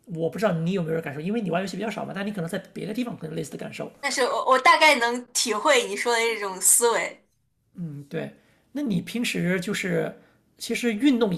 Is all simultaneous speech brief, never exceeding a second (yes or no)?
yes